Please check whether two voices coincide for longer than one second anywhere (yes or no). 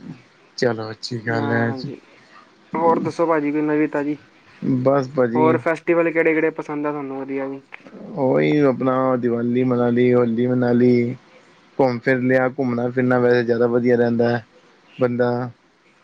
no